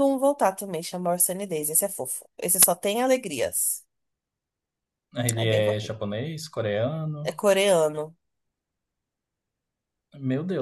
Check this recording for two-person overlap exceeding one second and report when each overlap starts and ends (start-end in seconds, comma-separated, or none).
none